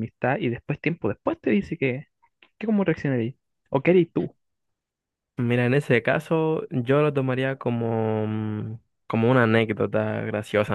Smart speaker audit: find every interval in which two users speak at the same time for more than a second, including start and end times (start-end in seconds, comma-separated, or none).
none